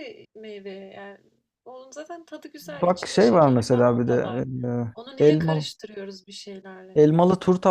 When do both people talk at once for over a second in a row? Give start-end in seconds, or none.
2.6-4.4